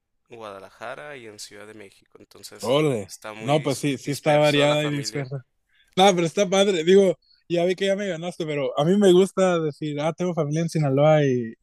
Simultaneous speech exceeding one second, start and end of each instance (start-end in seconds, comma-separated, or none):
2.6-5.3